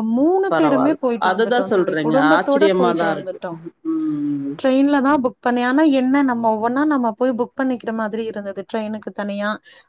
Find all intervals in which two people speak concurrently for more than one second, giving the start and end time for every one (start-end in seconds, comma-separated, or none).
0.5-3.4